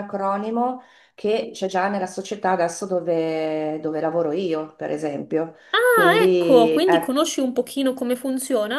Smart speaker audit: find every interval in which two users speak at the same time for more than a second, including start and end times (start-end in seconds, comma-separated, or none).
5.7-7.1